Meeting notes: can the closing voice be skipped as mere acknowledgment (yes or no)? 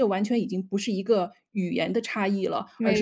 yes